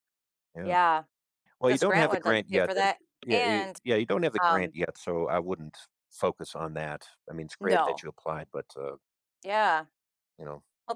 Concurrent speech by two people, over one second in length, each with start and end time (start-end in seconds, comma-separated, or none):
1.7-3.8